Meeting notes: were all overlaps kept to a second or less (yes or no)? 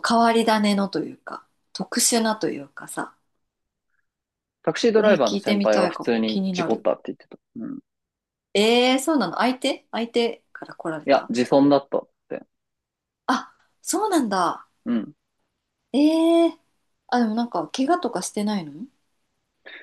no